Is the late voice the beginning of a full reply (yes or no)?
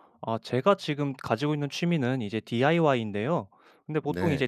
no